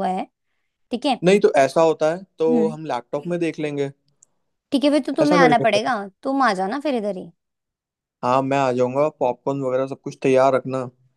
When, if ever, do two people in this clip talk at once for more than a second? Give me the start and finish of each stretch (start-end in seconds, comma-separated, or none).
none